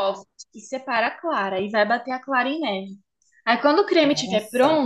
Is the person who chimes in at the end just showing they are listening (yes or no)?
yes